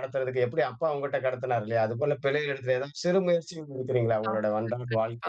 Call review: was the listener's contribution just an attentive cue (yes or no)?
no